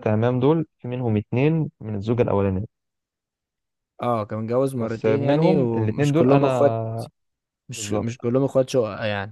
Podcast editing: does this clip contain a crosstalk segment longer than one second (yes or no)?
yes